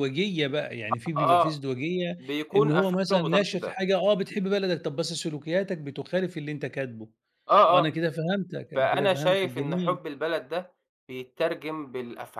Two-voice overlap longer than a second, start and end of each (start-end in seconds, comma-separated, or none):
2.6-3.8, 8.8-10.0